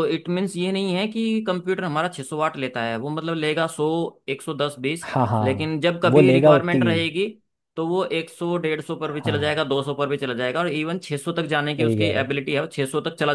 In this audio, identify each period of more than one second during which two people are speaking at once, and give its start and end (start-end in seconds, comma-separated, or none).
5.1-6.9